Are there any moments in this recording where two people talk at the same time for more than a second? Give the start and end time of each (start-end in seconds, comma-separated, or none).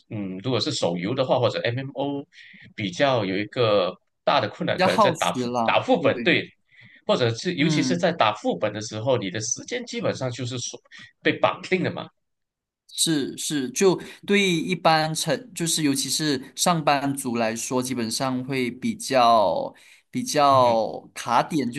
4.8-6.3